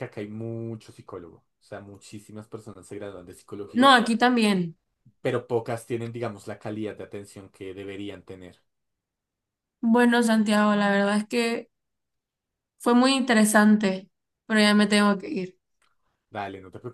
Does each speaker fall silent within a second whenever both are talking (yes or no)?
yes